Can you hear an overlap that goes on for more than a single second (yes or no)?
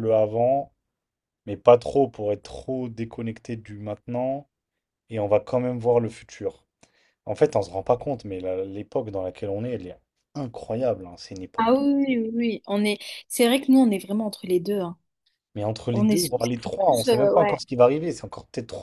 yes